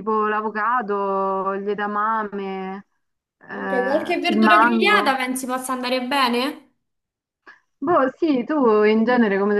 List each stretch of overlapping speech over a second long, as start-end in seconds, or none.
3.5-5.2